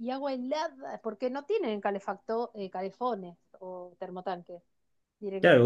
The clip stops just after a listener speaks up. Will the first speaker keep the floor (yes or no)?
no